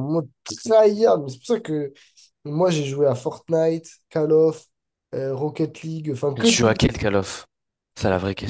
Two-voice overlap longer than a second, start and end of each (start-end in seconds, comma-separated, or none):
none